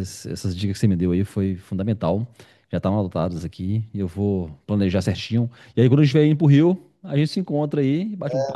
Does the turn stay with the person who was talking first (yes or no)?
no